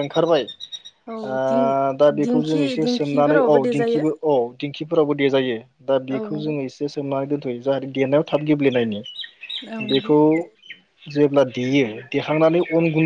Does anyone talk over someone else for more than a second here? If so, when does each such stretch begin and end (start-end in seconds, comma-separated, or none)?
2.2-4.0